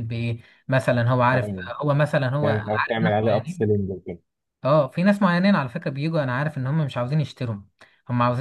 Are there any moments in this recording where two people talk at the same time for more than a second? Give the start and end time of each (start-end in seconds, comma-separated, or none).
2.4-3.8